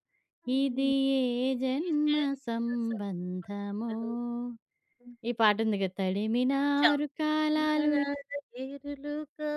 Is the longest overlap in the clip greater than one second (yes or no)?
yes